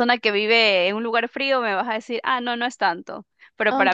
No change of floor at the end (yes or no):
no